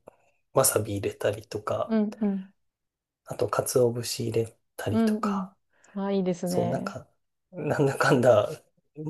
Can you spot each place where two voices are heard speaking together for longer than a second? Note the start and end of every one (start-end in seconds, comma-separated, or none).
none